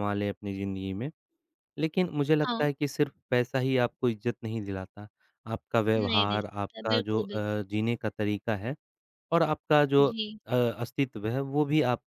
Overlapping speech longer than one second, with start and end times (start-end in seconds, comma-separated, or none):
6.0-7.6